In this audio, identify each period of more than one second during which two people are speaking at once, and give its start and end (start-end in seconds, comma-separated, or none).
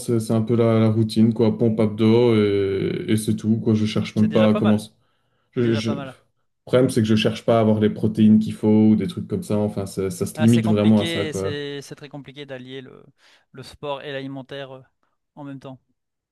10.4-11.6